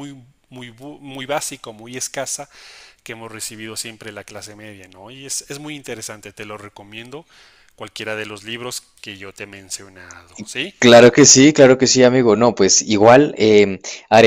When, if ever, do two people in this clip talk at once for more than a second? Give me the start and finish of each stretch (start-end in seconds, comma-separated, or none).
none